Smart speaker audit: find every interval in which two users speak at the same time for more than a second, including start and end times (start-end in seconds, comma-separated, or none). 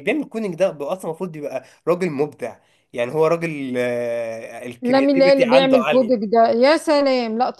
4.8-6.3